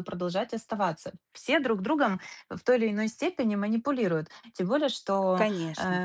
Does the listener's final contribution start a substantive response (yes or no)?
no